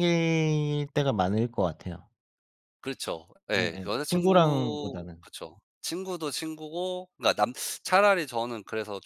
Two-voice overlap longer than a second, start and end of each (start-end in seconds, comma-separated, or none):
3.5-5.3